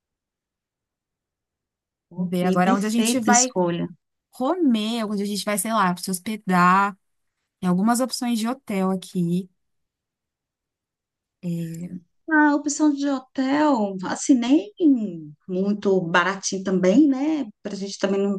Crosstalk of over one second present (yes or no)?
yes